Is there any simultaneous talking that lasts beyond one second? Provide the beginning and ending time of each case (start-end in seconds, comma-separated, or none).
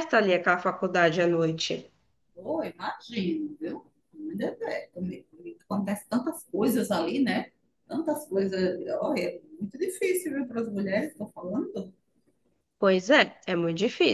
none